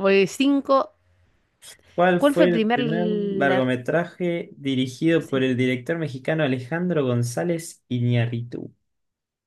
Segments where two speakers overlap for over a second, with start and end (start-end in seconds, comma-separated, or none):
2.2-3.6